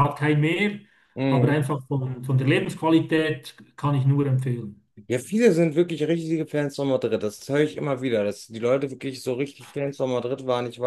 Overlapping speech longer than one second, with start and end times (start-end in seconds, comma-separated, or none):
none